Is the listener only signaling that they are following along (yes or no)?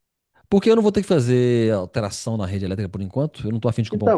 no